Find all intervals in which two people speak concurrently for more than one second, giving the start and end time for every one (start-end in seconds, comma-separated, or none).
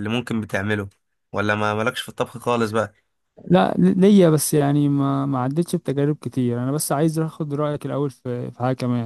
none